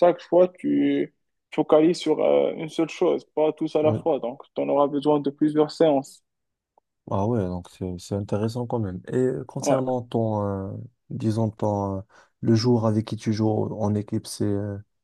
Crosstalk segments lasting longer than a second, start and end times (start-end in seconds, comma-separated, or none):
none